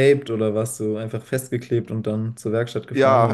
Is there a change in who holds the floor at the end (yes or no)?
yes